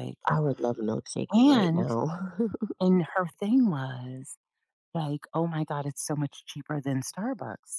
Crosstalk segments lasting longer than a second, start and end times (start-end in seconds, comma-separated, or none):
none